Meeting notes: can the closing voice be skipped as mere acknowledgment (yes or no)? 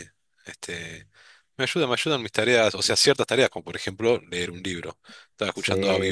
no